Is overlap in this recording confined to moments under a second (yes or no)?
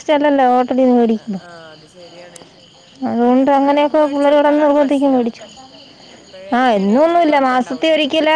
no